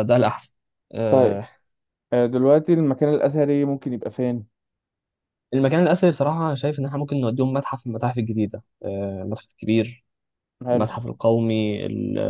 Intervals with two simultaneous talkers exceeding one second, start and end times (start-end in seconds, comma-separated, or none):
none